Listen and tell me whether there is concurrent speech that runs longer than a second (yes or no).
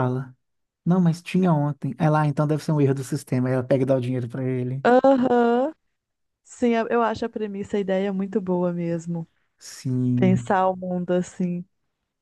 no